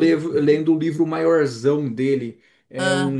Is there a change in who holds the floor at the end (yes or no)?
no